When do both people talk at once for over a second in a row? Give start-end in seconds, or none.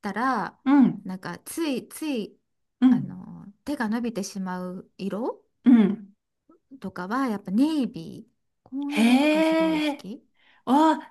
8.9-10.1